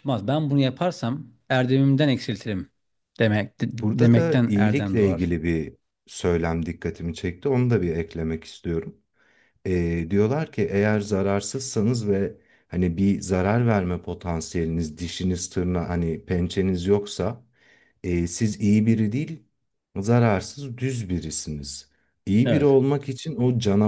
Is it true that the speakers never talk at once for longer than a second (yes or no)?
no